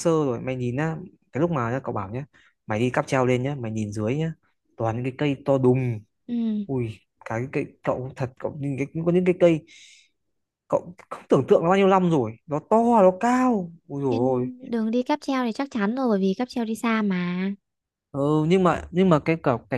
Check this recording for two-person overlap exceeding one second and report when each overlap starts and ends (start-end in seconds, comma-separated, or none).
none